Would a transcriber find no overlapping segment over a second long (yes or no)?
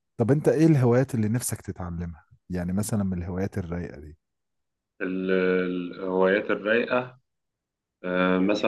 yes